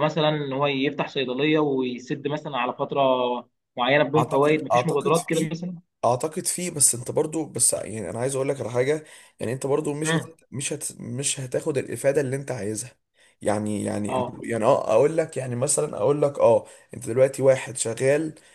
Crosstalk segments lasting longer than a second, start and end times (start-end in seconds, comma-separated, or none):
4.2-5.5